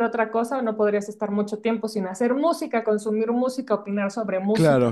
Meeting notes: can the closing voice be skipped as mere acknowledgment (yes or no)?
no